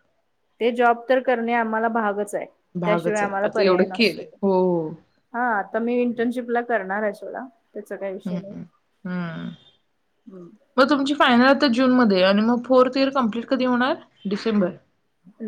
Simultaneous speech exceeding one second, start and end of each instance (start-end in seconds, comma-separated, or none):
2.8-4.2